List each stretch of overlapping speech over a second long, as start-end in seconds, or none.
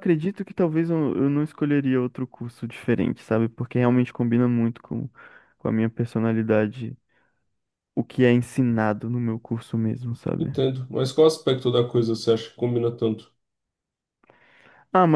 none